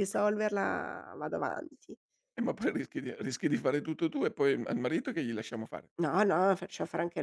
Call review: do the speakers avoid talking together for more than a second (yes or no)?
yes